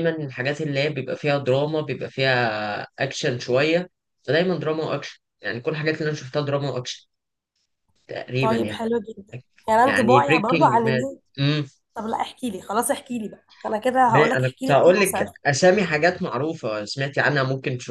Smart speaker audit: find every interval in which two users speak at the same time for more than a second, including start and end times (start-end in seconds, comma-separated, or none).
9.8-11.1, 14.1-15.3